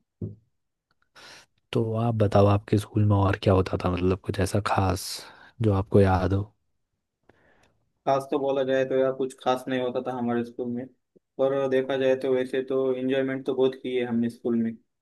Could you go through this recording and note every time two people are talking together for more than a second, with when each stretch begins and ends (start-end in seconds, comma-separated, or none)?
none